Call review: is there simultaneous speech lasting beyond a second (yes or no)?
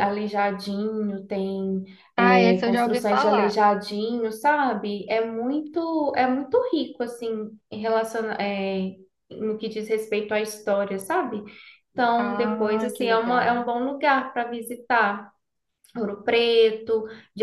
yes